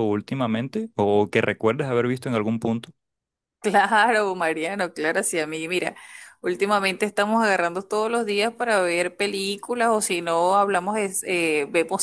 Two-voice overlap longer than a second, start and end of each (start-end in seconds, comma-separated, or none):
none